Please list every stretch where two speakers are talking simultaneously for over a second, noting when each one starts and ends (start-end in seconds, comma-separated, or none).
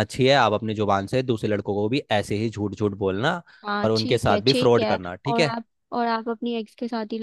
3.8-5.5